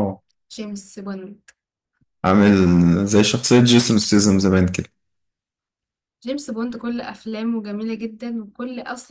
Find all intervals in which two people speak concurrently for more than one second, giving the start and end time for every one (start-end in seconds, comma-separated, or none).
none